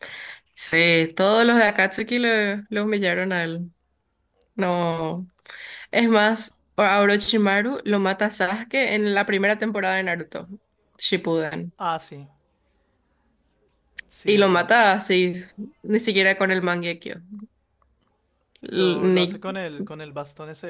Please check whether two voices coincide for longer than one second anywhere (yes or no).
no